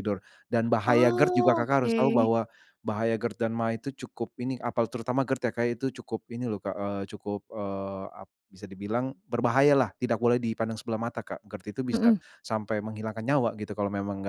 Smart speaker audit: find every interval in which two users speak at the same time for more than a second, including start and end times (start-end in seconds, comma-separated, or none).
0.8-2.3